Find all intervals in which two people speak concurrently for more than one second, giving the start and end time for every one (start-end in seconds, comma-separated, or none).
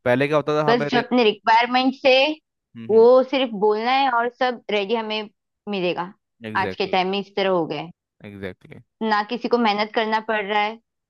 none